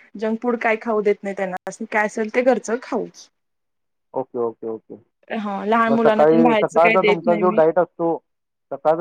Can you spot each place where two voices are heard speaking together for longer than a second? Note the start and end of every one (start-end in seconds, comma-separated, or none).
5.9-7.6